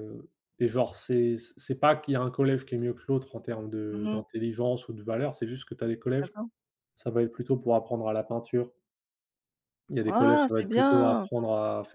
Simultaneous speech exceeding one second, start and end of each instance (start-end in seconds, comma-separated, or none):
10.1-11.3